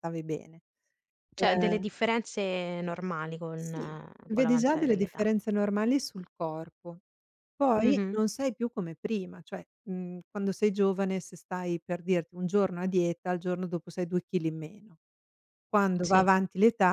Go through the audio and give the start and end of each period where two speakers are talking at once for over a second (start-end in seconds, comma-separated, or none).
3.5-5.3